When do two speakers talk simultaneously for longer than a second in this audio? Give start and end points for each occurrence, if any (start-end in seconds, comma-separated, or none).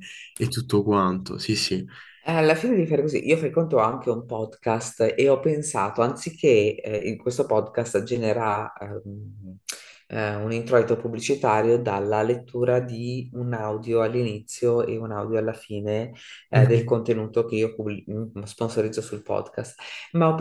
none